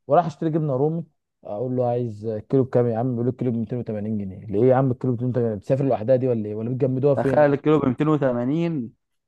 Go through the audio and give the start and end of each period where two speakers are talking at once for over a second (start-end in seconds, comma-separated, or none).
none